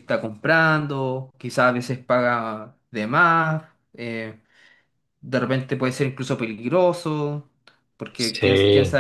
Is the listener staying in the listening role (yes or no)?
yes